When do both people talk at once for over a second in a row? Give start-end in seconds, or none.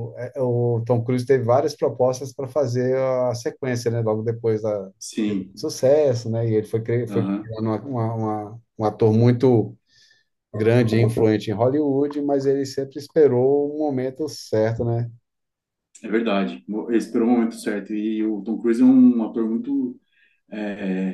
none